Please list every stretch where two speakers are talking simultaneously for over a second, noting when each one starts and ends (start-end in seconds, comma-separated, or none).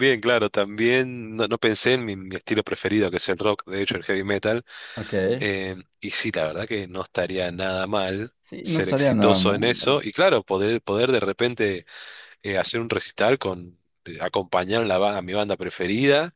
8.4-9.8